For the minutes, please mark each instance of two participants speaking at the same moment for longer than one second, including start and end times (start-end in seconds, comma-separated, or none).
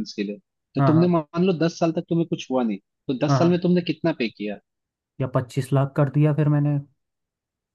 none